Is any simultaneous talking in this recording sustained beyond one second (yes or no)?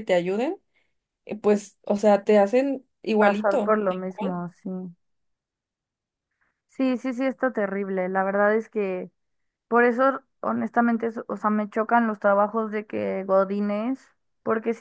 yes